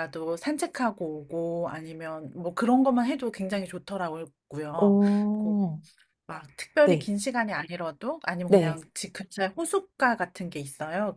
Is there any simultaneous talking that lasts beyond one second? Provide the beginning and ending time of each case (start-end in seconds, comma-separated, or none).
none